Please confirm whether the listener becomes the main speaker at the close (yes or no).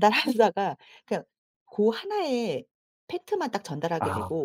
no